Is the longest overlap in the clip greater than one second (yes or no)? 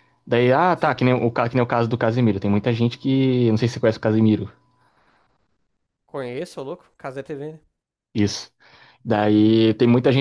no